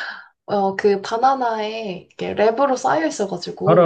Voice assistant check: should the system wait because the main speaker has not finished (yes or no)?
no